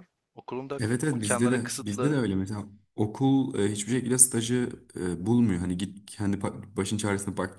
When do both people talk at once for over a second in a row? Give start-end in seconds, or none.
0.8-2.2